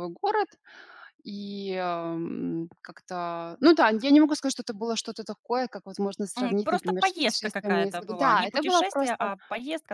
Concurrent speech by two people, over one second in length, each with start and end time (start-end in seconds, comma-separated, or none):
6.4-9.3